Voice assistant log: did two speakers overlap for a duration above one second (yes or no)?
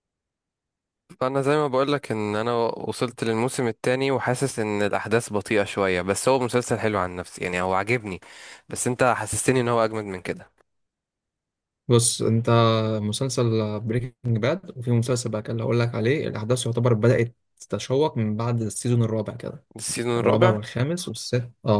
no